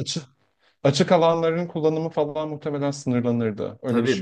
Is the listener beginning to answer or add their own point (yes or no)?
yes